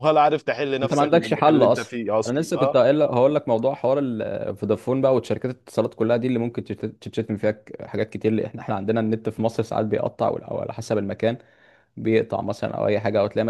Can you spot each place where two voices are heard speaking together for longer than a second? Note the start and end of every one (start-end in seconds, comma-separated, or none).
0.8-2.8